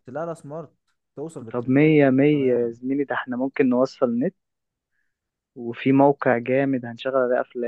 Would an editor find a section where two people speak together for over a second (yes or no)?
yes